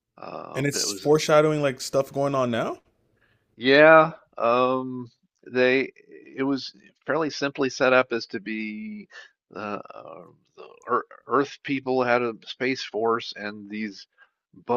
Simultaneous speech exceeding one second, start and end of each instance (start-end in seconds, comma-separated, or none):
none